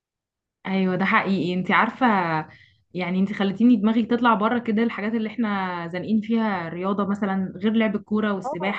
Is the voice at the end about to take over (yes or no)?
no